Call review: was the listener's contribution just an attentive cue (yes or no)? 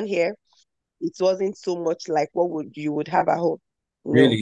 no